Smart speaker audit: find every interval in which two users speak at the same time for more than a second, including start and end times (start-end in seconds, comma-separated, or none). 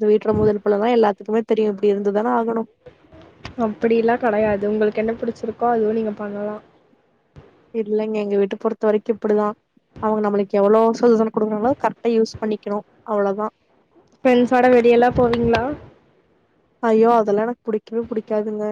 none